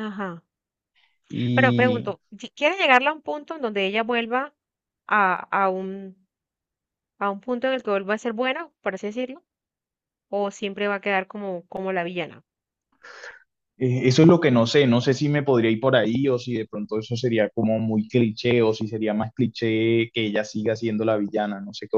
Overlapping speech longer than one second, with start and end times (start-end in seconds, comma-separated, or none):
none